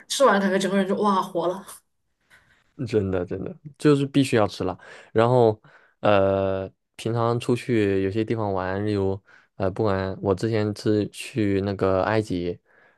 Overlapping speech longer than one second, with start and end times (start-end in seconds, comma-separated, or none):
none